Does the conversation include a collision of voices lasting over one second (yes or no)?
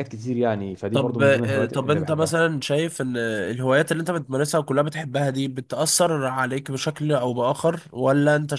yes